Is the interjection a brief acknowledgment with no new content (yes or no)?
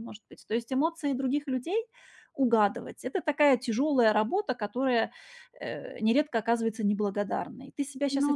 yes